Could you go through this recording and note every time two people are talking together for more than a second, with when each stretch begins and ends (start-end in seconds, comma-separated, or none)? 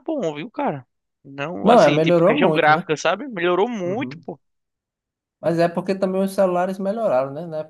1.6-2.9